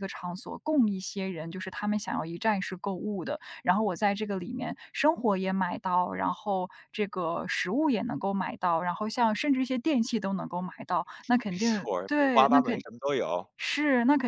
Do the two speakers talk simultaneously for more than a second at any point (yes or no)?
yes